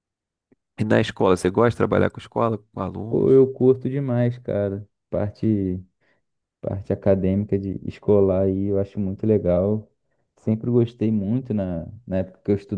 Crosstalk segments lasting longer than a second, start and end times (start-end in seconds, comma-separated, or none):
none